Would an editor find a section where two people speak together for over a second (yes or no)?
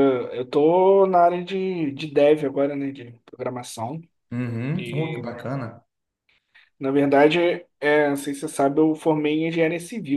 no